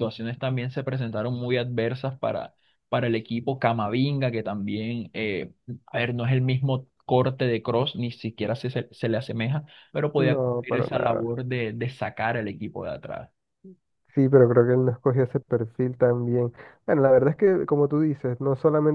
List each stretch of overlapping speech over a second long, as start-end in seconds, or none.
10.2-11.4